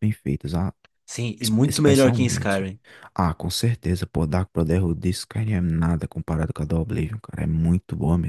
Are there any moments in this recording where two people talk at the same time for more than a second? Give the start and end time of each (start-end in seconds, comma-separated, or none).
1.4-2.7